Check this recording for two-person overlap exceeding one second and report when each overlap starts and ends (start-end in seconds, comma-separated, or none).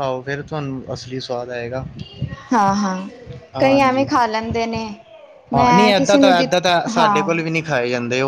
5.5-7.4